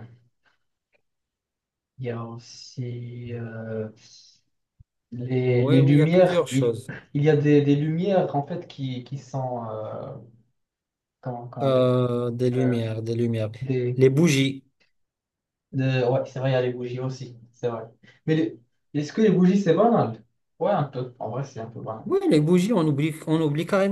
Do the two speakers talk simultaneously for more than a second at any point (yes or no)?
yes